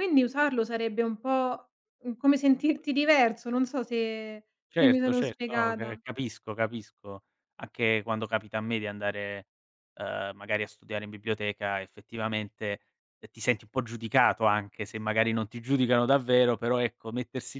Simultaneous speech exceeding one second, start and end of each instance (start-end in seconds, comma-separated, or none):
4.7-6.0